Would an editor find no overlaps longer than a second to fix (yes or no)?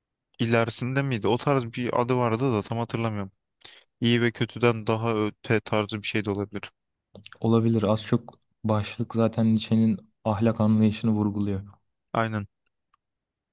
yes